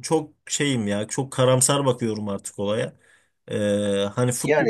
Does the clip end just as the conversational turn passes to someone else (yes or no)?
no